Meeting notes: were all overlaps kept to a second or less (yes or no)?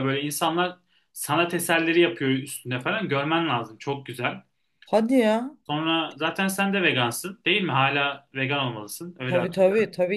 yes